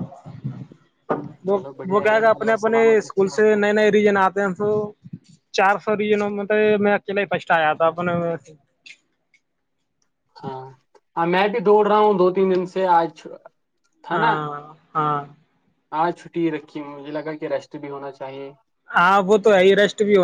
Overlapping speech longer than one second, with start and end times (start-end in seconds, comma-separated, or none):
1.5-3.6